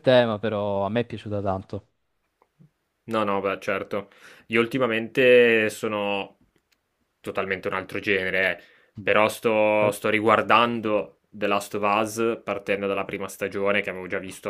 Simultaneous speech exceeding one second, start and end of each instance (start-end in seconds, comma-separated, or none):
none